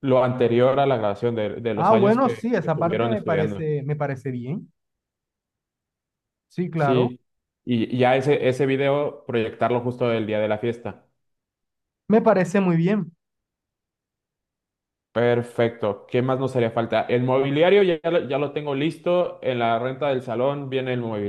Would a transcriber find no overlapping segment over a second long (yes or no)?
no